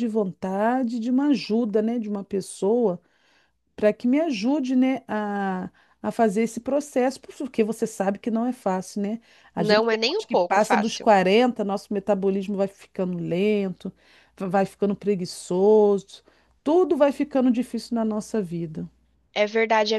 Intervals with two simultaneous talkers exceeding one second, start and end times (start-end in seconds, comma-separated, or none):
9.6-11.1